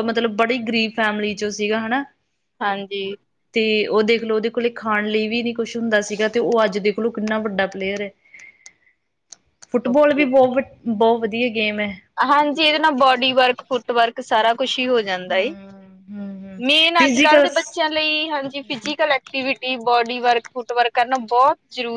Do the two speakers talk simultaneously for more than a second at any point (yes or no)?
no